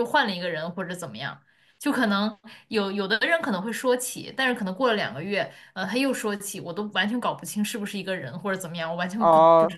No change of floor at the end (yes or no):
no